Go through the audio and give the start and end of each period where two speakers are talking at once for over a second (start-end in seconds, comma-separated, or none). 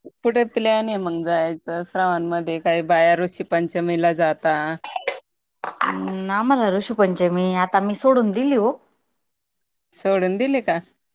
none